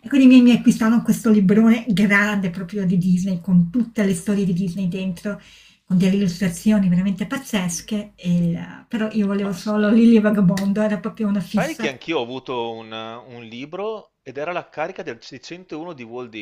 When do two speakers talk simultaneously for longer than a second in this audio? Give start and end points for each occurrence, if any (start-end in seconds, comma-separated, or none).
none